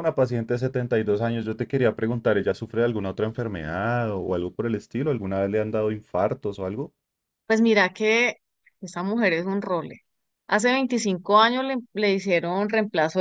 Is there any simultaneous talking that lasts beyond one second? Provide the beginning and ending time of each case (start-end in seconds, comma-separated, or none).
none